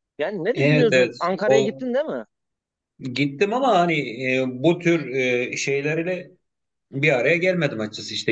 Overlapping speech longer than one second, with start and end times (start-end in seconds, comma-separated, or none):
0.5-1.8